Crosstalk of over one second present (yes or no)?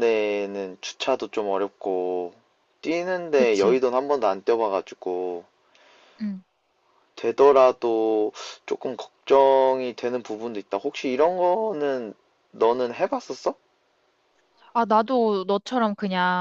no